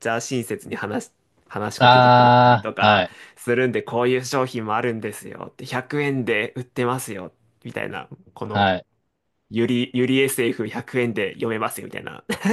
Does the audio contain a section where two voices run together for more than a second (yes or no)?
yes